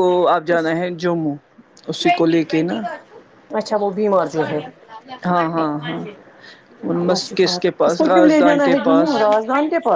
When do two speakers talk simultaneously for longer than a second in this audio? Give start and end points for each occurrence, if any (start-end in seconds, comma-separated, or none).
7.0-9.1